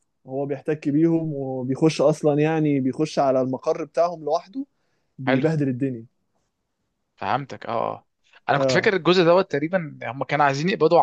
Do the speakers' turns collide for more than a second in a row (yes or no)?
no